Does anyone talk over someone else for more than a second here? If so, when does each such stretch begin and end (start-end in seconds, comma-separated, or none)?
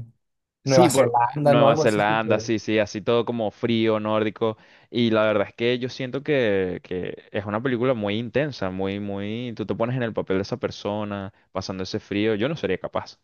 0.6-2.5